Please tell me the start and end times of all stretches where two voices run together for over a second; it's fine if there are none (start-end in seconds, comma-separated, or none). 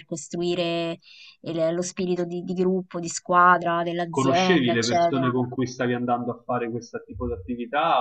4.1-5.4